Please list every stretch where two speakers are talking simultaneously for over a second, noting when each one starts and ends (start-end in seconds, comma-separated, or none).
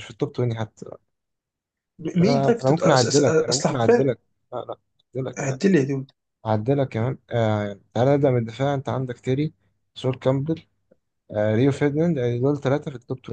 2.2-4.1